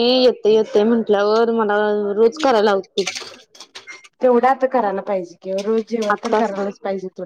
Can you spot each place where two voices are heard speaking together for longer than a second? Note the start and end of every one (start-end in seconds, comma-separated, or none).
none